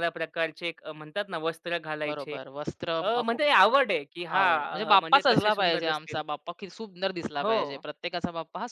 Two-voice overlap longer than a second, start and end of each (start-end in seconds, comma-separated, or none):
4.3-6.2